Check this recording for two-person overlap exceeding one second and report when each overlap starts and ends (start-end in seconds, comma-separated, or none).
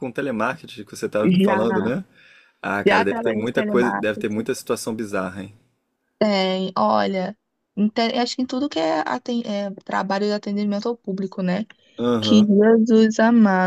2.9-4.5